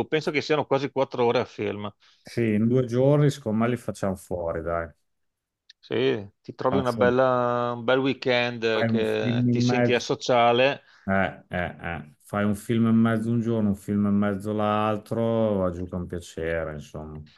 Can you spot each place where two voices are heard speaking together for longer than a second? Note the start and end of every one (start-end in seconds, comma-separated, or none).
8.7-10.1